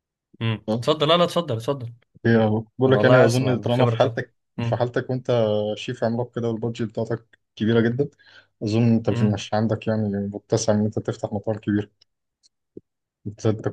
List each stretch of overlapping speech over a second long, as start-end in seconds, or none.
2.9-4.9